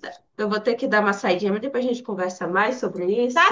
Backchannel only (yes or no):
no